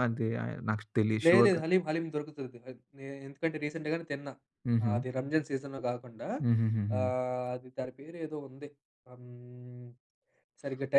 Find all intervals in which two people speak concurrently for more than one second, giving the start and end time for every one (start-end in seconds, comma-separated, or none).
none